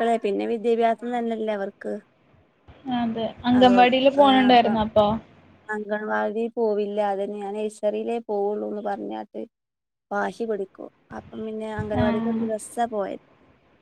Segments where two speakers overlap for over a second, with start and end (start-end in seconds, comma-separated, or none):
none